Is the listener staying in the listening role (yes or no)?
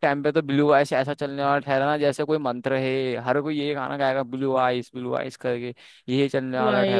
yes